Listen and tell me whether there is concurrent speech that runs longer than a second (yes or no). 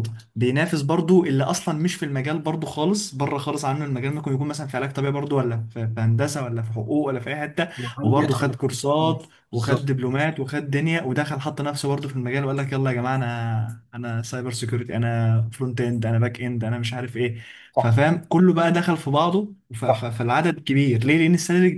yes